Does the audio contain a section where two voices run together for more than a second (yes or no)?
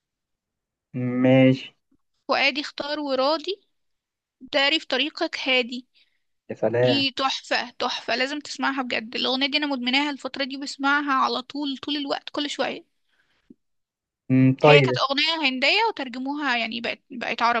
no